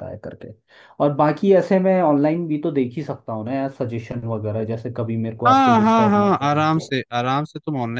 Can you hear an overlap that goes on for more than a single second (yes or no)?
yes